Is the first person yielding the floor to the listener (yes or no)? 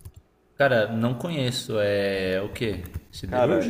yes